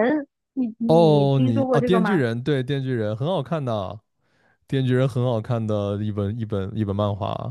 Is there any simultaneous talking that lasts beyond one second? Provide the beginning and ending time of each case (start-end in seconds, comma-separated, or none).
0.9-2.2